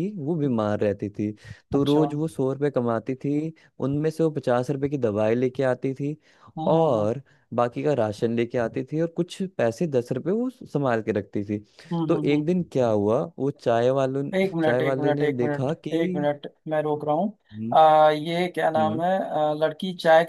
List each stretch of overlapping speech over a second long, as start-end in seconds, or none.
14.3-16.3